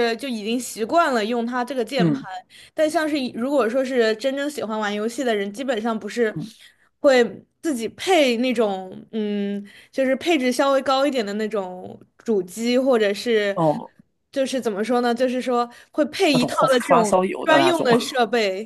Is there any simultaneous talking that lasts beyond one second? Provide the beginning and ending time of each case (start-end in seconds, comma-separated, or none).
16.3-17.9